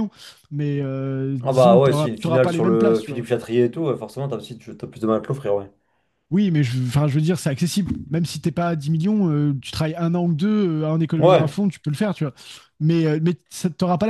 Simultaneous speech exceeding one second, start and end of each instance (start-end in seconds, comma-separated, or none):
1.4-3.3